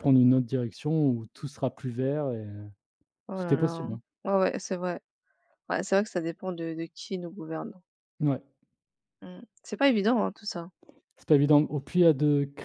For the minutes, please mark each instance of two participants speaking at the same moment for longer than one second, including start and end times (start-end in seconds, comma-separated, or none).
none